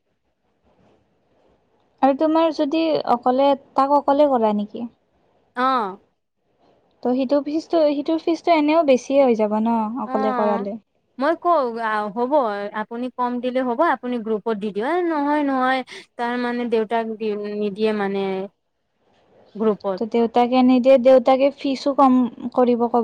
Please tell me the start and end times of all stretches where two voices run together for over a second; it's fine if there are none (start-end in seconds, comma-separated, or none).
none